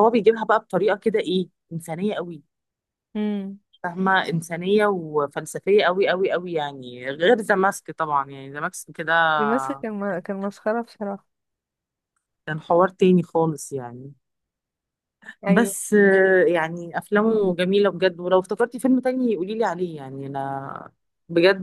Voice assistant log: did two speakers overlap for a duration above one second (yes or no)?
no